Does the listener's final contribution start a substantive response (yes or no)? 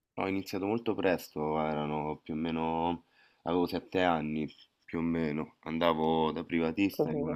no